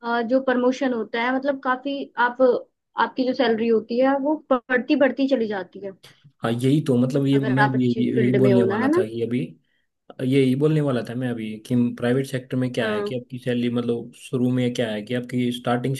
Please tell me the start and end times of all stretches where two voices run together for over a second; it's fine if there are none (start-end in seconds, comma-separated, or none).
7.3-9.0